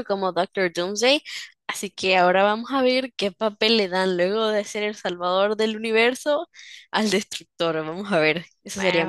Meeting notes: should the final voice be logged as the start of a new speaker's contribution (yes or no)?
yes